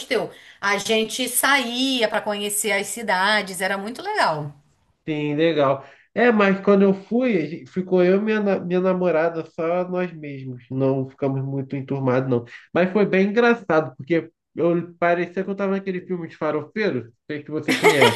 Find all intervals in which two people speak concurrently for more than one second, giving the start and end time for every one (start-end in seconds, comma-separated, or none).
none